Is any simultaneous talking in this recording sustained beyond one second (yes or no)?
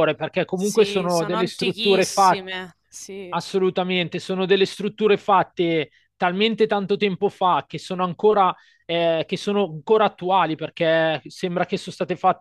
yes